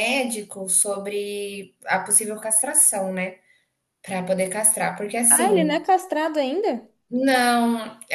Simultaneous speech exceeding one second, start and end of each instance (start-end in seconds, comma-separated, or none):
none